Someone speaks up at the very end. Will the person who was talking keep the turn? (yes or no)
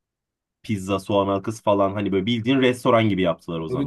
no